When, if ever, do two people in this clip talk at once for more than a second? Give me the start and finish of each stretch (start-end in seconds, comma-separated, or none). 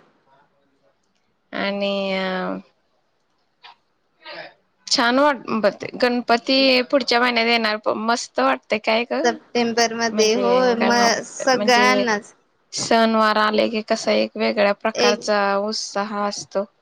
none